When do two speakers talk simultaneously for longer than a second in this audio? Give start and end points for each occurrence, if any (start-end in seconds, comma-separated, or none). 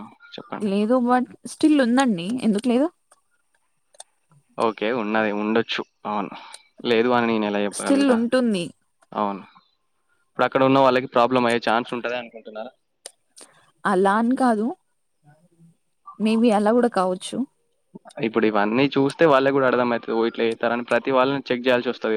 none